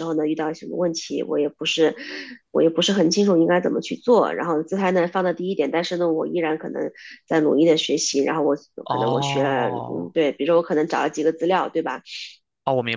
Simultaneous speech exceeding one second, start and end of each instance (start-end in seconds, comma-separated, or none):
8.8-10.1